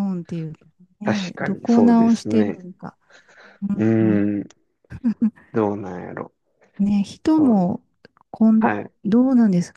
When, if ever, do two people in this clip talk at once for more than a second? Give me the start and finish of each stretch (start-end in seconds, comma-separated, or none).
1.0-2.7